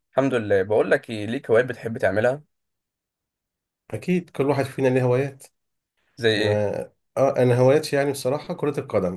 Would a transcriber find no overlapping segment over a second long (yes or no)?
yes